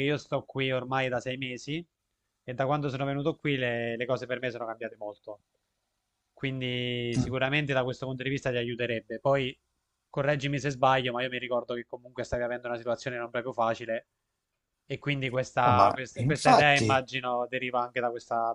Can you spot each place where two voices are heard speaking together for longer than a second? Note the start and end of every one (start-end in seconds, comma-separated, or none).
15.6-17.0